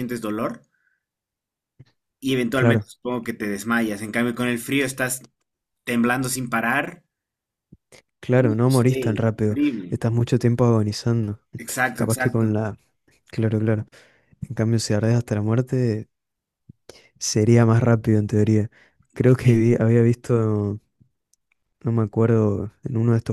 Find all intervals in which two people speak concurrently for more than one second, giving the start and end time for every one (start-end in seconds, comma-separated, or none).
8.4-10.0